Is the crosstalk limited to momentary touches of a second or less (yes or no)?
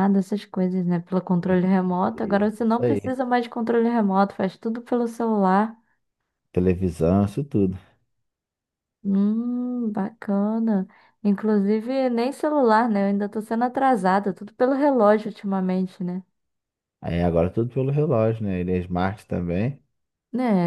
no